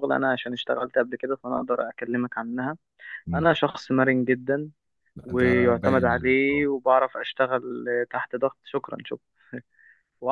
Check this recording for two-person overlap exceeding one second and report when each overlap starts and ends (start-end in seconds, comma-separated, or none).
5.2-6.7